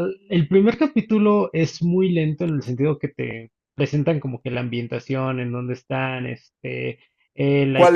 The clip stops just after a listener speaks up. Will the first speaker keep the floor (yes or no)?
no